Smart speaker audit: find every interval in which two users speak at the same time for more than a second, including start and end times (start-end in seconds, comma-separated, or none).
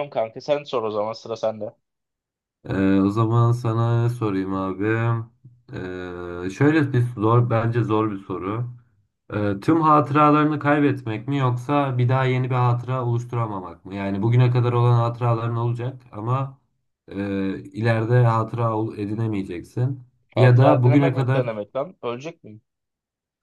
20.4-21.6